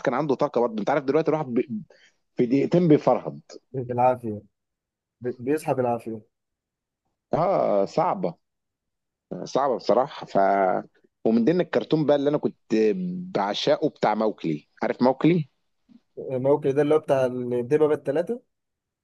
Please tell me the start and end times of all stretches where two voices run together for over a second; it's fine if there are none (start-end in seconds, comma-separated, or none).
none